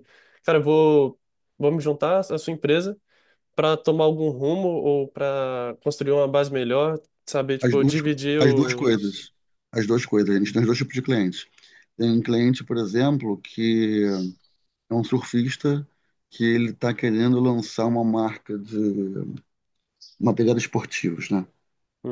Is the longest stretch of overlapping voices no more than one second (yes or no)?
no